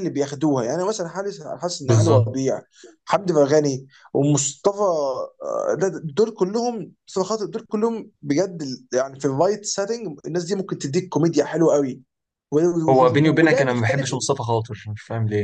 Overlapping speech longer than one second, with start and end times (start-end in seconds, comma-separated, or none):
12.9-14.1